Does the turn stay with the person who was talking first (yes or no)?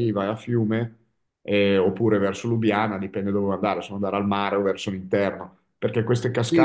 no